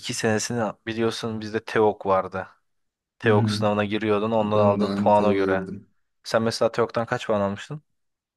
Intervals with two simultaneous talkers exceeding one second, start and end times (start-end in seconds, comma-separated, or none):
4.4-5.7